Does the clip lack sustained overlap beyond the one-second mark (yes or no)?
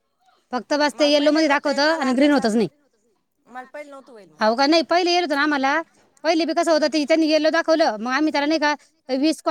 no